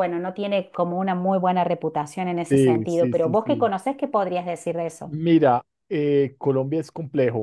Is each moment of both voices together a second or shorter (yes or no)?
no